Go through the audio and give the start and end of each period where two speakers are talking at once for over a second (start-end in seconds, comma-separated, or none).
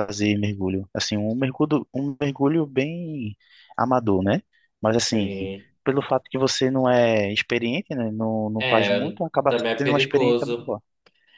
8.6-10.7